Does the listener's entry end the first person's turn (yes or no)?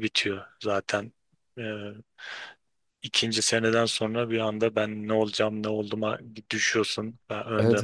yes